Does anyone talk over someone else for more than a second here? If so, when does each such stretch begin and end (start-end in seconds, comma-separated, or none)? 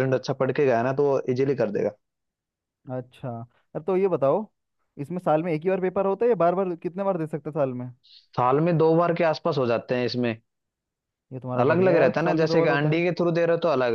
11.6-13.0